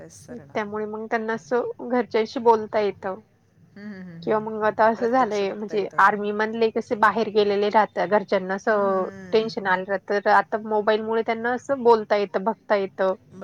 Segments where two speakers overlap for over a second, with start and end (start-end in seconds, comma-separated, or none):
4.2-6.0